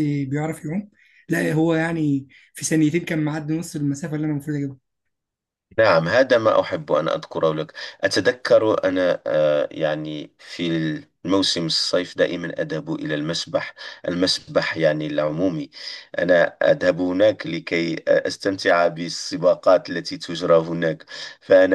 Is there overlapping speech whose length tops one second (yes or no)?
no